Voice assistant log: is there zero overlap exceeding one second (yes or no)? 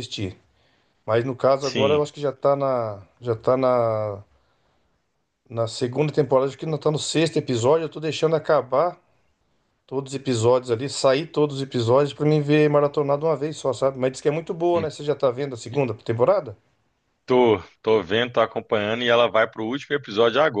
yes